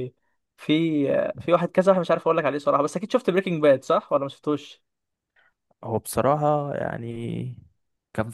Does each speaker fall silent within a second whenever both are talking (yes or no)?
yes